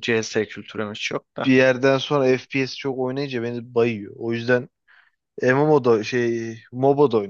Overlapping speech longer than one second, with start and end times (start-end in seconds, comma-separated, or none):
none